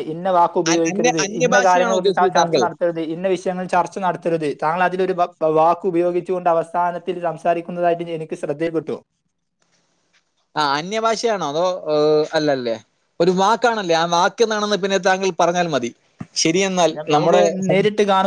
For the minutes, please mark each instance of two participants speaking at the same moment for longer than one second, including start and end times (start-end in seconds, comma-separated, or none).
0.9-2.6